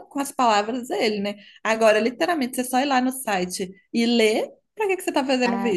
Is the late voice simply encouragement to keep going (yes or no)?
no